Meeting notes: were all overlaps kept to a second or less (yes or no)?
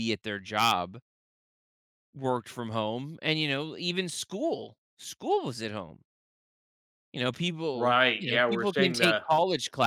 no